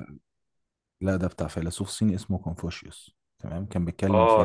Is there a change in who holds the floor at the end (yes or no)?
no